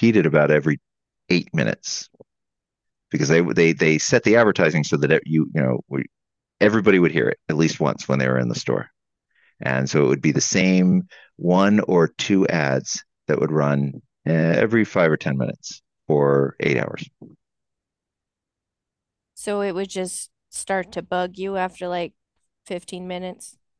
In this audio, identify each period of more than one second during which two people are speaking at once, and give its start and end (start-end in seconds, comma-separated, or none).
none